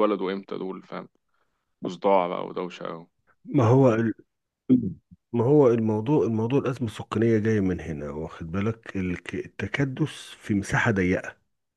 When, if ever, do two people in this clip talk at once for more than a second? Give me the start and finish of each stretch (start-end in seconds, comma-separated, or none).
none